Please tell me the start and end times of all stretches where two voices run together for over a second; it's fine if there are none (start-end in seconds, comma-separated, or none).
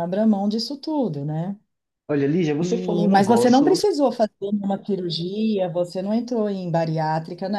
2.6-3.9